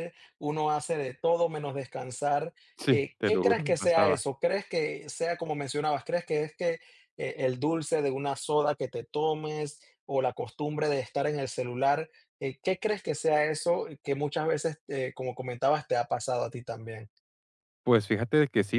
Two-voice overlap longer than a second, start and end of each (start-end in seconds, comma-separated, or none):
2.8-4.2